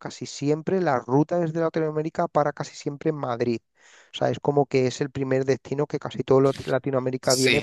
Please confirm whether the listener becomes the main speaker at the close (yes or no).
yes